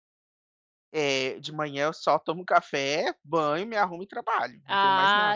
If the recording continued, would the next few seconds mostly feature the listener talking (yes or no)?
yes